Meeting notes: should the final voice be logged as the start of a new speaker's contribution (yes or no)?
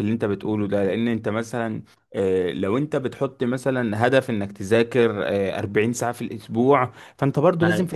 no